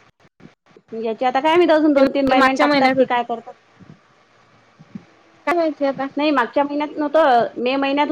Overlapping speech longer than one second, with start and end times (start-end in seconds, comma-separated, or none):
1.9-3.2